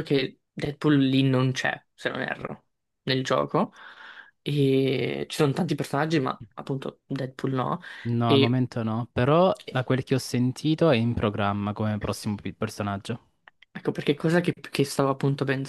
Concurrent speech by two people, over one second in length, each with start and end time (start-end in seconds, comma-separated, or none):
none